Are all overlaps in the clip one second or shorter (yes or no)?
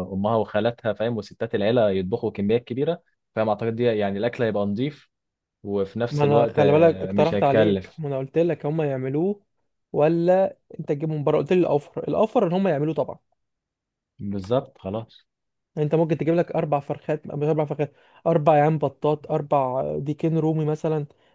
no